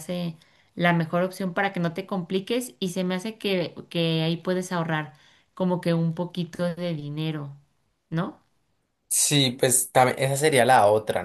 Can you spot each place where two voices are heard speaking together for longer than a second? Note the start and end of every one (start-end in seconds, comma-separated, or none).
none